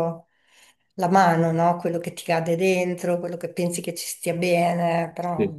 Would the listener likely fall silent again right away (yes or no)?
yes